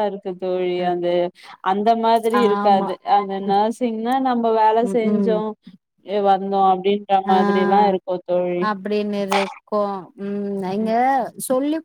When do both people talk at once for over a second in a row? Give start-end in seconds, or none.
none